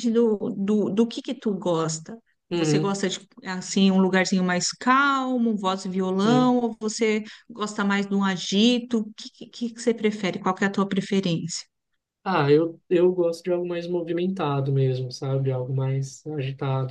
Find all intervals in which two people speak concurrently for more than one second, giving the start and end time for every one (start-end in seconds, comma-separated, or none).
none